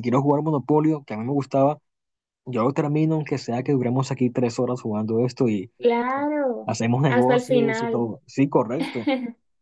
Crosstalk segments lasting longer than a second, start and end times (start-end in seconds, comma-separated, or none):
6.7-8.1